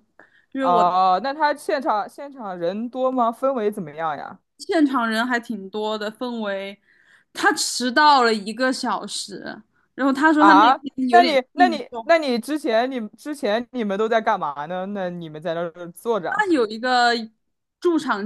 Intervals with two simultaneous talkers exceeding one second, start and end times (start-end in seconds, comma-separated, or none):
10.3-12.1